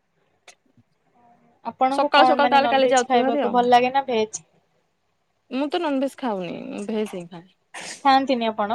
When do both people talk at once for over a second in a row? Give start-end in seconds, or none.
2.0-3.5